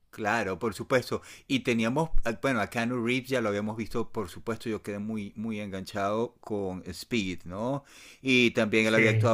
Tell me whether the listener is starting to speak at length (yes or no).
no